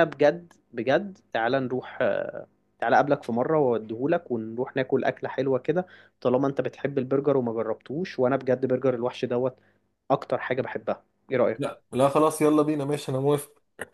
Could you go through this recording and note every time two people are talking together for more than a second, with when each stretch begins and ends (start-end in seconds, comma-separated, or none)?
none